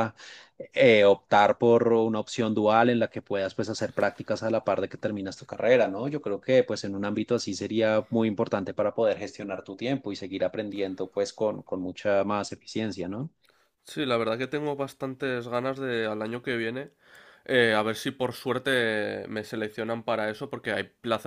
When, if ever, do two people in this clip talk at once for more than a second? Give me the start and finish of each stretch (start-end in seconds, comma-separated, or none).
none